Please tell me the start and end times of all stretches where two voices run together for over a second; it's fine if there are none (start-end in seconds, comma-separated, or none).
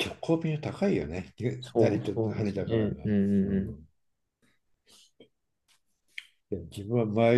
1.6-3.8